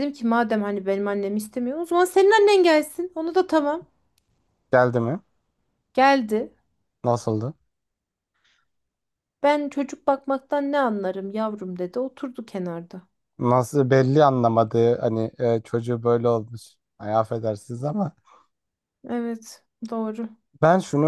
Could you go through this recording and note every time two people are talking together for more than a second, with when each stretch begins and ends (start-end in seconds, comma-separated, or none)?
none